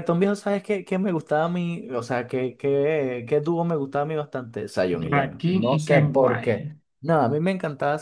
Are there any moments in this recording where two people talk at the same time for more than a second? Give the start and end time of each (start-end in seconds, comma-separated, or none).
5.1-6.7